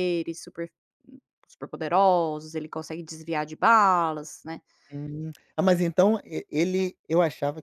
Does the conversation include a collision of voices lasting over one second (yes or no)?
no